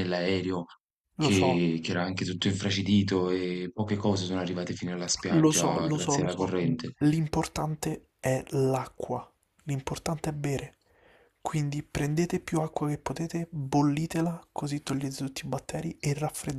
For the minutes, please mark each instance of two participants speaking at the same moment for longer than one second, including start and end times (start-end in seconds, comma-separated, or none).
5.3-6.7